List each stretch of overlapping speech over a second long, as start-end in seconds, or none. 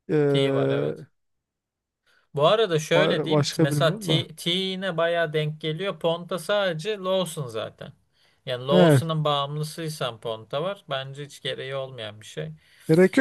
2.9-4.2